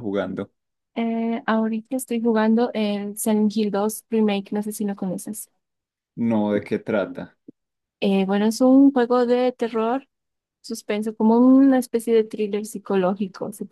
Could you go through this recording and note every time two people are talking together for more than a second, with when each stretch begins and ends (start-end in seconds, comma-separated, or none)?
none